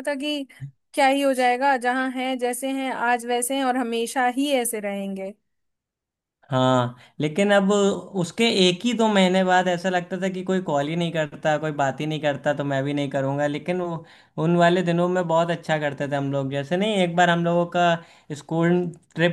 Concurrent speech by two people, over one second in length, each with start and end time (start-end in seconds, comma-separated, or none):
none